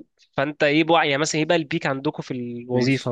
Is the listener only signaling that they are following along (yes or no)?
no